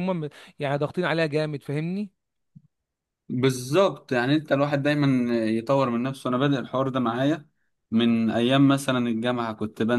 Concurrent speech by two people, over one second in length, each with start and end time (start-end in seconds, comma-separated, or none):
none